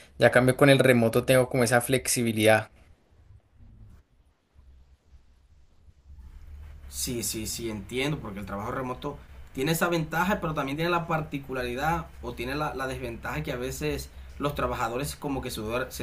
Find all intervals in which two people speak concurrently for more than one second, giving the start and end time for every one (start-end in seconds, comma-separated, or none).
none